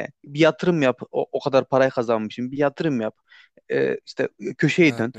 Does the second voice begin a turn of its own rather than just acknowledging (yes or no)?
no